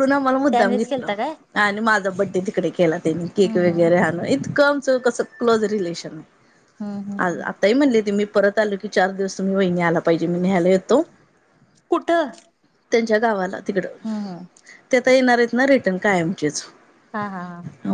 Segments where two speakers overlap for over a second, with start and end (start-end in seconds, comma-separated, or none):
none